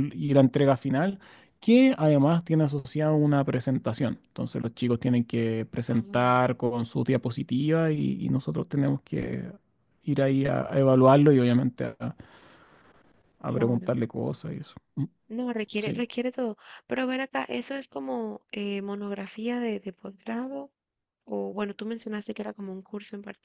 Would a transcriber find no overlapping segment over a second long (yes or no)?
yes